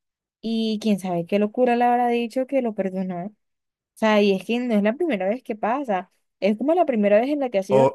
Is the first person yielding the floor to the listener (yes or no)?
yes